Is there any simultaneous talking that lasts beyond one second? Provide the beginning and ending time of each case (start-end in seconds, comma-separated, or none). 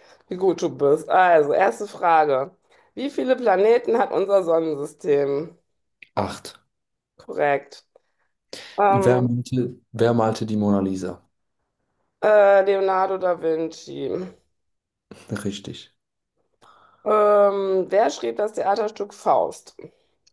none